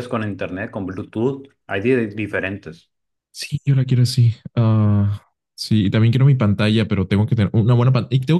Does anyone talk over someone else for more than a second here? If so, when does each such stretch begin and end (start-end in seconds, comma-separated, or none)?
none